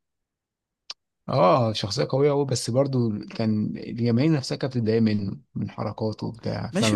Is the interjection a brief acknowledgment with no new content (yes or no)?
no